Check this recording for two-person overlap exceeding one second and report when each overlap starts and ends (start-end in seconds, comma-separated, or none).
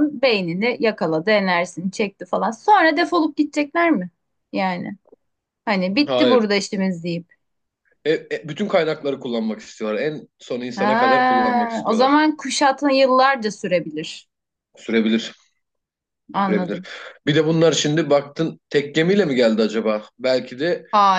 10.8-12.2